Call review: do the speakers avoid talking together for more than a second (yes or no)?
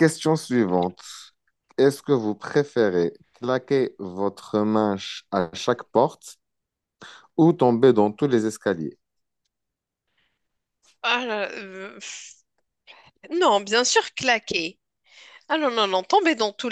yes